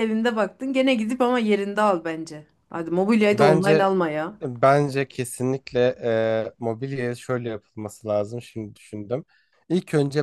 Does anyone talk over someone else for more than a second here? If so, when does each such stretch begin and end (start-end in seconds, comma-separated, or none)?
none